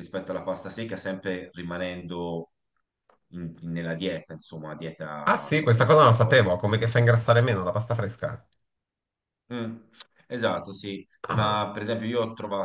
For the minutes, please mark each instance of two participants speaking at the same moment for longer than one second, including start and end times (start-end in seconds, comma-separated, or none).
5.2-6.5